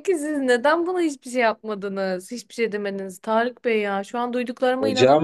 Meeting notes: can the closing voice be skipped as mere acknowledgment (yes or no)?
yes